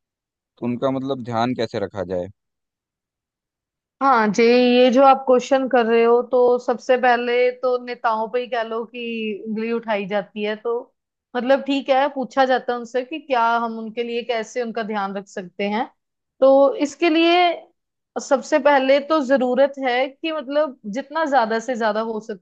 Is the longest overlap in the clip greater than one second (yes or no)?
no